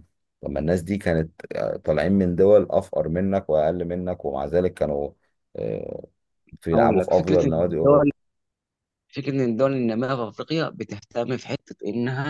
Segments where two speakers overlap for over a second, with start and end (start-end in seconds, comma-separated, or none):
6.7-8.1